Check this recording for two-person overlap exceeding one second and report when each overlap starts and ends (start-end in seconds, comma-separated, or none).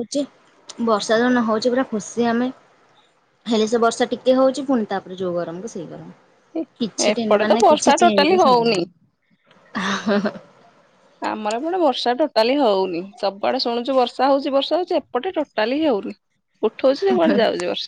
7.1-8.8